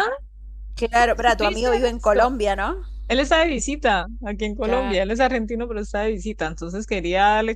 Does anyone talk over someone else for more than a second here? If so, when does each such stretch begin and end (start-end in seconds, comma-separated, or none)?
1.0-2.3